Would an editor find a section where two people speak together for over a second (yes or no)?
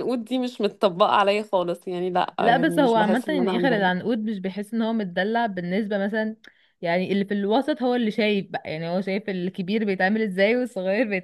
yes